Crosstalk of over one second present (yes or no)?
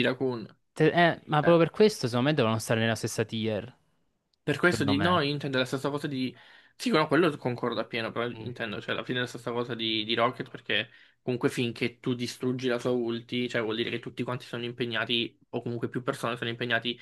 no